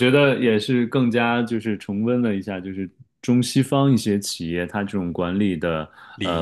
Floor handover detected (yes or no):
no